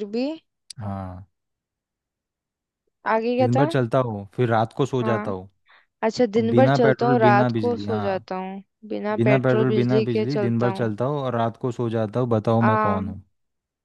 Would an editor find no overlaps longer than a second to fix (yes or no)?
no